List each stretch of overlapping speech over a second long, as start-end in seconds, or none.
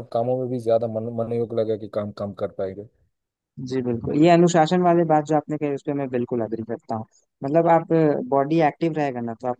none